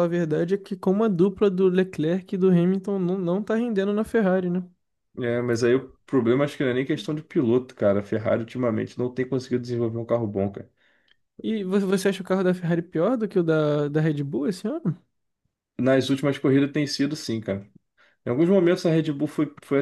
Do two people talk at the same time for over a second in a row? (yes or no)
no